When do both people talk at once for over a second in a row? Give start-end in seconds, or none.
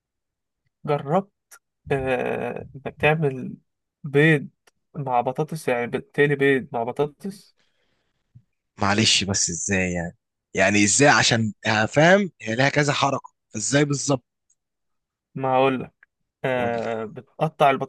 none